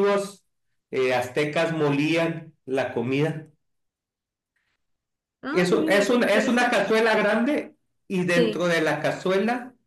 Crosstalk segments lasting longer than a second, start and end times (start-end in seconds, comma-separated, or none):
5.5-6.8